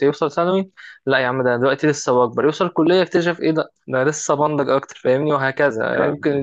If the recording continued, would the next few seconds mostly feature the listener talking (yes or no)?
no